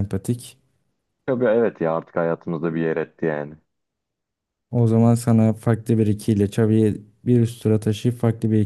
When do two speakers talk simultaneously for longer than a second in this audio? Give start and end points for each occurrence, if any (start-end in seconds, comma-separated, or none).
none